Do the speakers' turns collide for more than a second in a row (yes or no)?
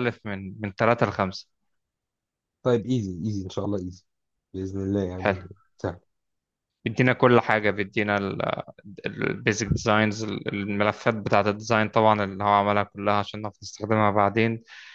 no